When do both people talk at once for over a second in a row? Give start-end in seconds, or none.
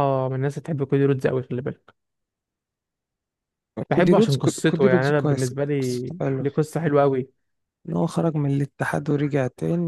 3.9-5.5